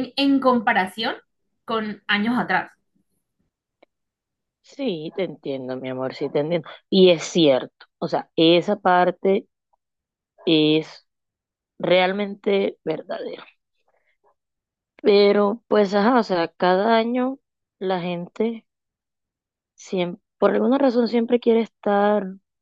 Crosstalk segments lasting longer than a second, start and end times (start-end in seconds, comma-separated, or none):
none